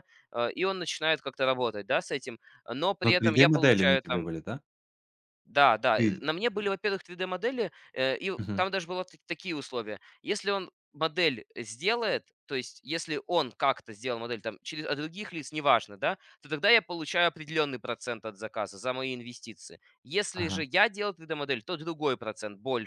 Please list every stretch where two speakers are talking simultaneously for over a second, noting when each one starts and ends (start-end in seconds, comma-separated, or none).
3.1-4.3